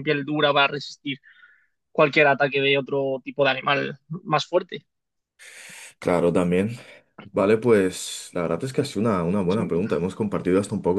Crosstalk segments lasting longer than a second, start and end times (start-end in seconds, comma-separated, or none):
none